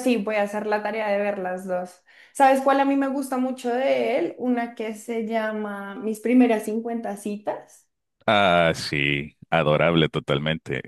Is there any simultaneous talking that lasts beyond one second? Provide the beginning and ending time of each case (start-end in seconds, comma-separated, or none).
none